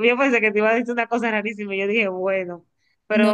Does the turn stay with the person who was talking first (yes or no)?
yes